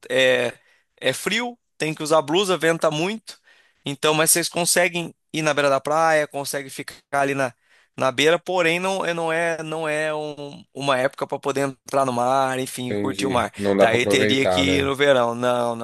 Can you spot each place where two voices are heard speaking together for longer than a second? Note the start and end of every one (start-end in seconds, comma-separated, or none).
12.9-14.9